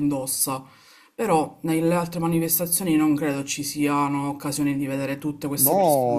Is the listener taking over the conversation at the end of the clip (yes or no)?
yes